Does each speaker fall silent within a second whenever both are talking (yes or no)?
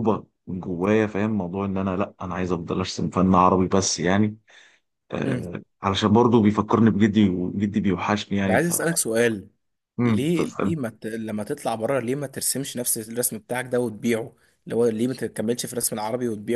yes